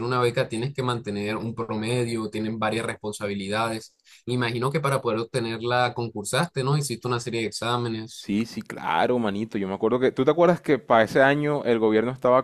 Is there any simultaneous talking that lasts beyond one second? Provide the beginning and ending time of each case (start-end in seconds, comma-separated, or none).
none